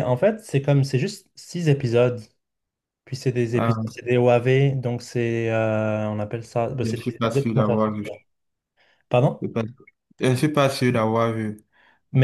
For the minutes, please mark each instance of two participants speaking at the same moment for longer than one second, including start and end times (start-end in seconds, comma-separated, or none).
6.8-8.0